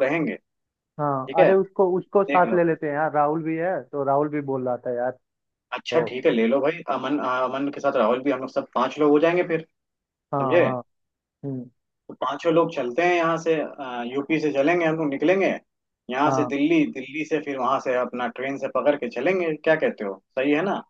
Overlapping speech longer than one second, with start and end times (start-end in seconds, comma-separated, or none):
none